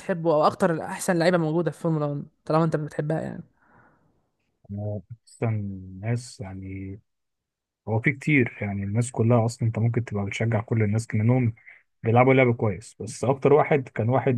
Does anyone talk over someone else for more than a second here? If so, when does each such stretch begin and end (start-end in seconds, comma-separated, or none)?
none